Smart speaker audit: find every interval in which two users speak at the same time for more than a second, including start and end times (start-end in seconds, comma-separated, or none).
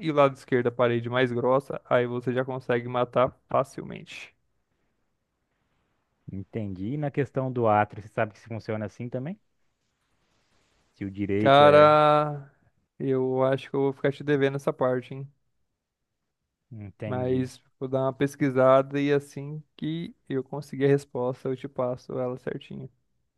none